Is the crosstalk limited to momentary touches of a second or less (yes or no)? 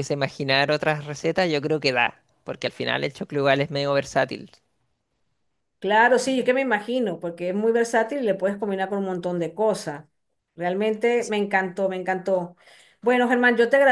yes